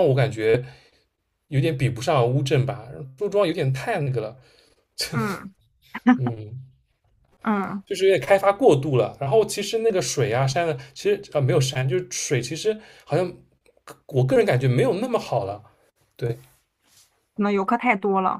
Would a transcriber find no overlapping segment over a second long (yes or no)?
yes